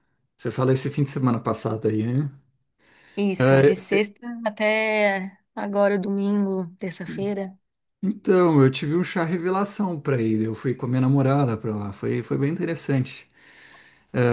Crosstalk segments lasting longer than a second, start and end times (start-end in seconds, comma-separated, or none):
none